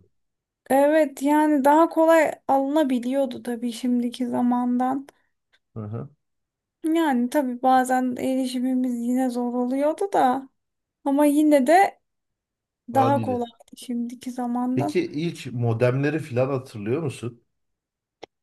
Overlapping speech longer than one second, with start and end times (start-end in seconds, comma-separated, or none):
none